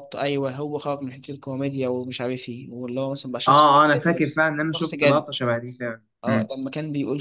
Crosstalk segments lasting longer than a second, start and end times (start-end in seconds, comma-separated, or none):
3.5-5.3